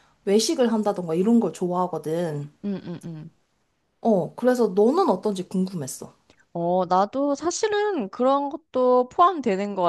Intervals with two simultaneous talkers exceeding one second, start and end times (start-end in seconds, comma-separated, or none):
none